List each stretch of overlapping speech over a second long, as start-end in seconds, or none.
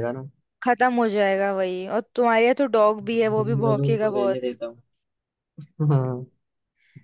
3.1-4.5